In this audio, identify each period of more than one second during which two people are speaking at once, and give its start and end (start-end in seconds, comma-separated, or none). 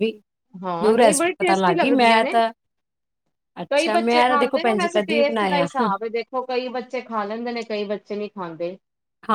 0.8-2.3, 3.7-5.7